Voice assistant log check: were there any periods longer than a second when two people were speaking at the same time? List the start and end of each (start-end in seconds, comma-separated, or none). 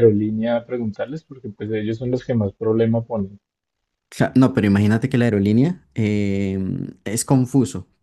none